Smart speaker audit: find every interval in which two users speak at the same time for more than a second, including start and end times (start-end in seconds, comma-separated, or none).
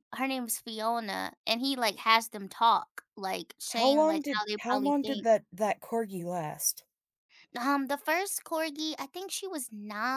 3.7-5.3